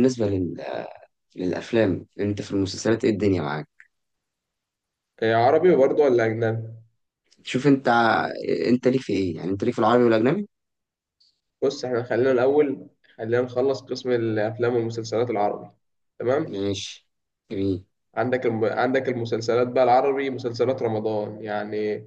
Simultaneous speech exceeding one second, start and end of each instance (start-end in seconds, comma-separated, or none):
none